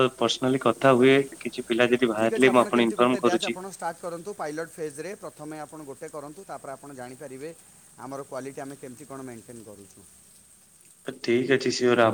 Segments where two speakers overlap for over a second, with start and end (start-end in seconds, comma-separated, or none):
none